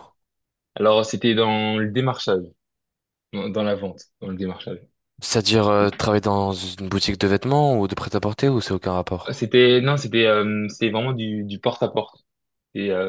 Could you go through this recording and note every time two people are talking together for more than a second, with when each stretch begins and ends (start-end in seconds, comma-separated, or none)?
none